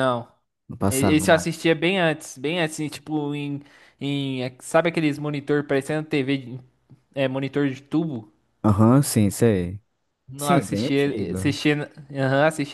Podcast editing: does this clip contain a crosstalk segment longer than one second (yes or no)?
yes